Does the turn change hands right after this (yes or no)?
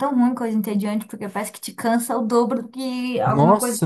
yes